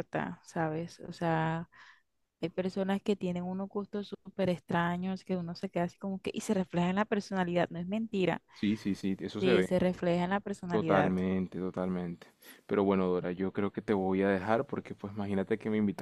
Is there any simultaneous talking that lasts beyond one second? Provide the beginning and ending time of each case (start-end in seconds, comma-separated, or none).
none